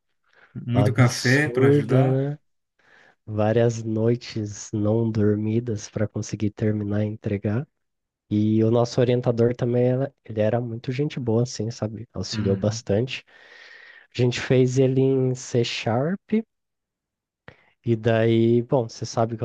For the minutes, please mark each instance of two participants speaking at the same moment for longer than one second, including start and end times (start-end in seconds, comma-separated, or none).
0.7-2.2